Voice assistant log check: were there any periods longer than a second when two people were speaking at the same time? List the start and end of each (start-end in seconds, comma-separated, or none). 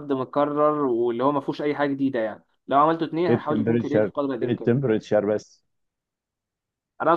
3.3-4.7